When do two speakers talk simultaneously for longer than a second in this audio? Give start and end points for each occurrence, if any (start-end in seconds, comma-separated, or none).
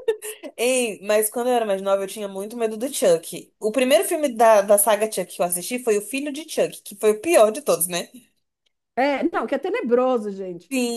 none